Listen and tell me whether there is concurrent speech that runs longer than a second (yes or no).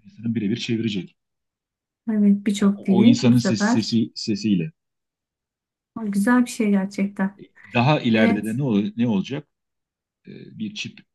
yes